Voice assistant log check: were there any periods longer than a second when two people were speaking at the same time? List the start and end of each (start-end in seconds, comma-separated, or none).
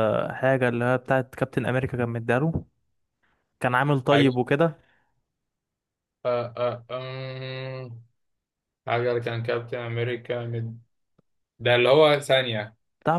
none